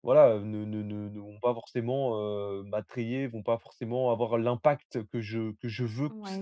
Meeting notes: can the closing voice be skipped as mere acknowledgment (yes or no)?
no